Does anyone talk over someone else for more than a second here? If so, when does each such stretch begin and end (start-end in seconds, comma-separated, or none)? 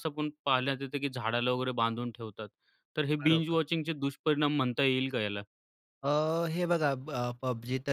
none